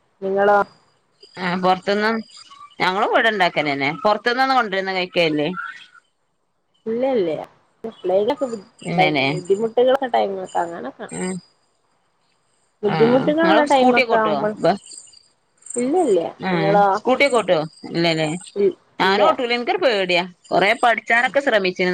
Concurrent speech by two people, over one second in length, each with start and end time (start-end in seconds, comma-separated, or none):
13.0-14.5